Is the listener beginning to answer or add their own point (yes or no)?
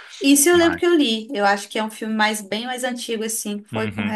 yes